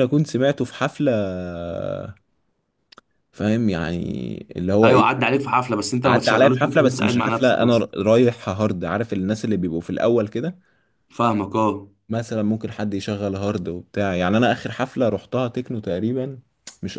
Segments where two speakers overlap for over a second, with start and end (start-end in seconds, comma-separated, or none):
6.0-7.8